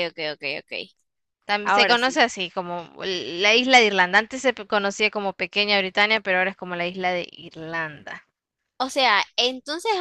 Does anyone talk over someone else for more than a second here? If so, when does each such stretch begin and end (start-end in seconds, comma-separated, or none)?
none